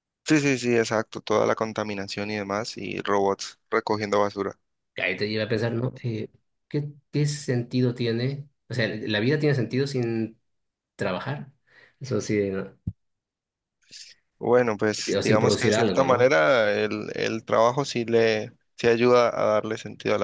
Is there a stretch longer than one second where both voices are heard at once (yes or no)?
yes